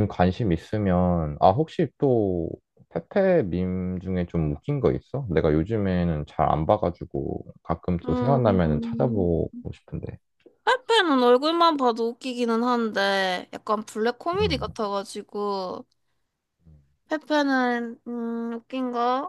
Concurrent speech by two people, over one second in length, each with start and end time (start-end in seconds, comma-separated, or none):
8.1-9.3